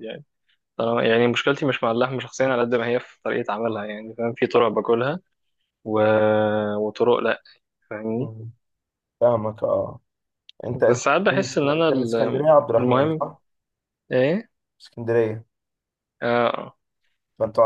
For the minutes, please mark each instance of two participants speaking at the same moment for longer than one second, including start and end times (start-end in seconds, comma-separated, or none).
10.8-13.2